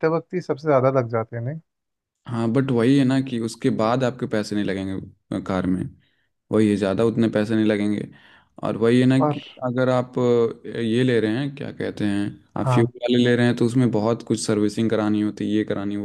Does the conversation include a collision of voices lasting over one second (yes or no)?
no